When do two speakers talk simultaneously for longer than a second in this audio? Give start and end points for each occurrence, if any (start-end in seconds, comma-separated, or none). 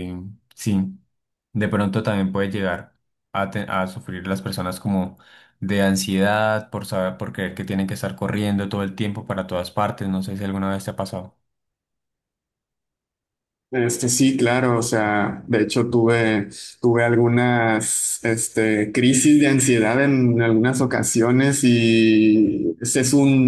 none